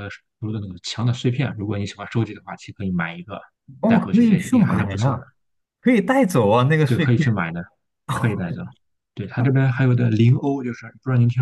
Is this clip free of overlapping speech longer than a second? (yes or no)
no